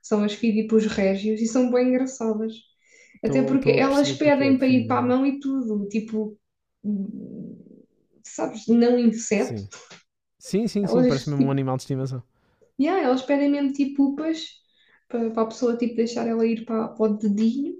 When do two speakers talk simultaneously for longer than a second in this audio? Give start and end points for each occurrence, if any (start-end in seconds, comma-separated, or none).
3.2-5.2